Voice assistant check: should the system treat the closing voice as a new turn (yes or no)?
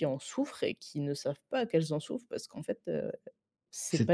yes